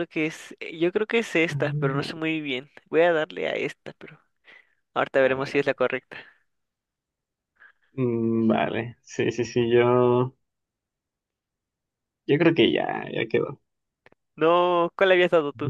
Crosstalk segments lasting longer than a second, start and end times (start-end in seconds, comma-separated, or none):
none